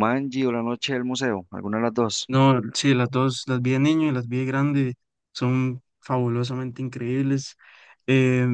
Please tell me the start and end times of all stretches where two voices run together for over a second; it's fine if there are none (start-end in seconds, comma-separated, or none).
none